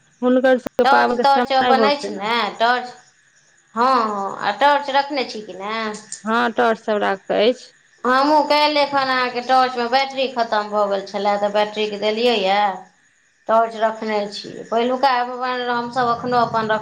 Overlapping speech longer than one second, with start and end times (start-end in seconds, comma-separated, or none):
none